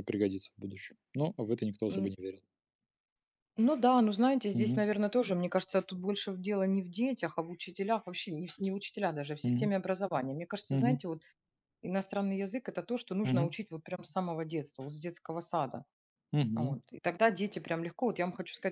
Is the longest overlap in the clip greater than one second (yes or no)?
no